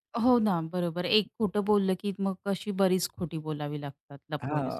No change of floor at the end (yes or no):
no